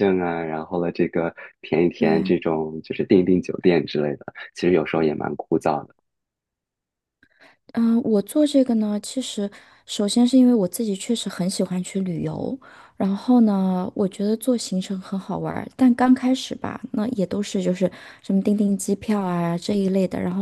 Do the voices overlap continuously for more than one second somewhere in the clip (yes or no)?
no